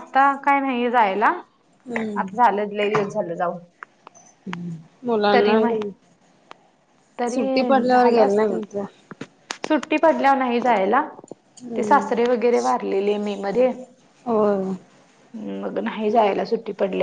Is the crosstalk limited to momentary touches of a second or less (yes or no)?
no